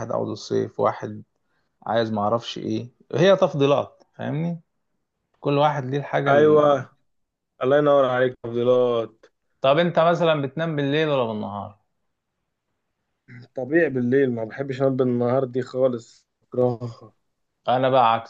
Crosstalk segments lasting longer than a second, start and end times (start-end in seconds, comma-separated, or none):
none